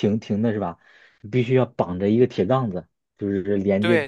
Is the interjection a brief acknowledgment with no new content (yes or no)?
yes